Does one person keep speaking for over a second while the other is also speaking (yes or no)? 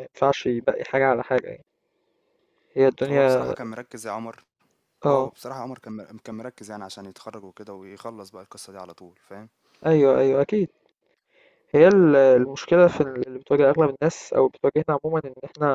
no